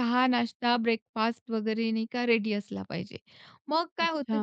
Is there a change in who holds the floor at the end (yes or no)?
no